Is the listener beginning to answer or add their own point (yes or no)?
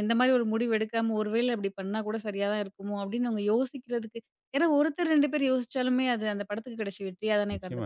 yes